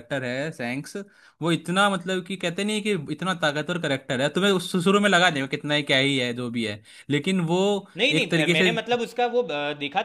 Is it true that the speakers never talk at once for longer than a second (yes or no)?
yes